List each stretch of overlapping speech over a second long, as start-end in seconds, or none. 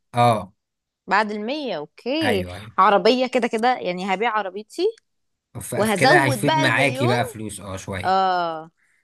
5.7-7.1